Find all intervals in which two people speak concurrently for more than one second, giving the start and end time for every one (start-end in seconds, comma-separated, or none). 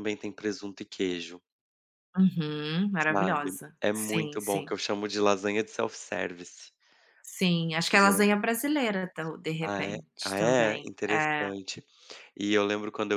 3.1-4.7, 9.6-11.5